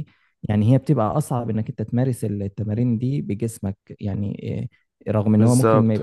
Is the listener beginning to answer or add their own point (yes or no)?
no